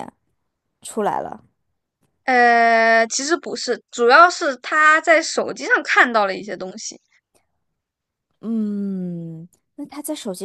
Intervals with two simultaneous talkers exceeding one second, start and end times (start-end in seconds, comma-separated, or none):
none